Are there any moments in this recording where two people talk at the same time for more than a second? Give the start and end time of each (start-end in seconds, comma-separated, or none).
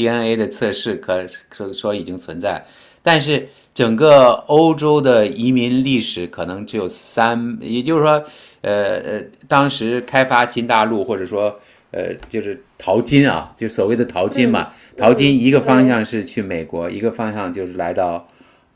14.3-16.1